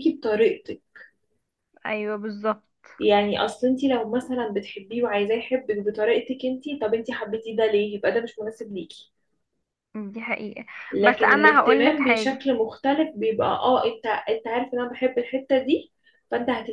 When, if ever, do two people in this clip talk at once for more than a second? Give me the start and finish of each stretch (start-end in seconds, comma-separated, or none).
11.0-12.4